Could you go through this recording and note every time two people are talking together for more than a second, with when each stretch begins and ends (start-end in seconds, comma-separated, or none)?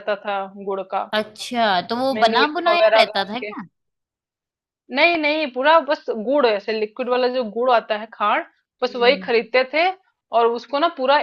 2.0-3.5